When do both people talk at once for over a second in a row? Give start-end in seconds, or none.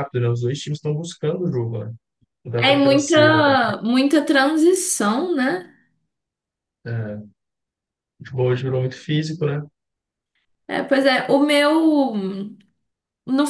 2.6-3.8